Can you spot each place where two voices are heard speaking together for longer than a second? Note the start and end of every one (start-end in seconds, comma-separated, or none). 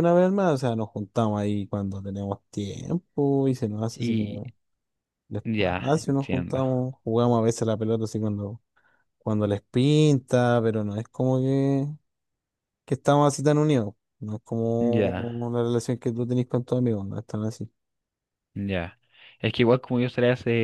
5.4-6.6